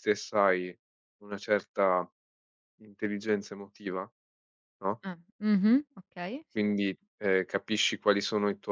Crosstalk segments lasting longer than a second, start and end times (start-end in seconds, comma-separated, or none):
none